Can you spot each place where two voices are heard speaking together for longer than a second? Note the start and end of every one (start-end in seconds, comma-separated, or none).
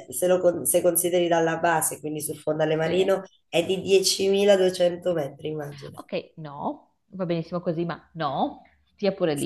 none